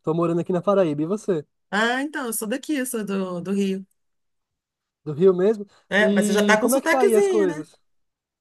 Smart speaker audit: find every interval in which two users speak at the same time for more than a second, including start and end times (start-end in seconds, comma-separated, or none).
5.9-7.7